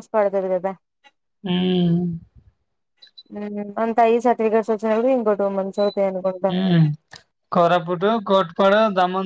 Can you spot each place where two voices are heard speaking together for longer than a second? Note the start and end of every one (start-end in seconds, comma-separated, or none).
none